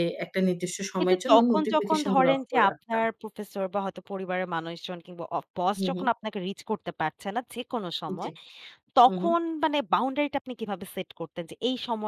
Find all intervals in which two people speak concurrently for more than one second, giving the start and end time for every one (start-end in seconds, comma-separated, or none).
1.0-3.0